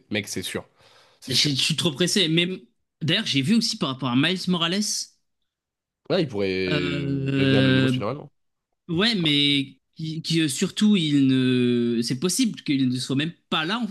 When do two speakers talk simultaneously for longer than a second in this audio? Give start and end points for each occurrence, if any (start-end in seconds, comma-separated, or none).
6.7-8.0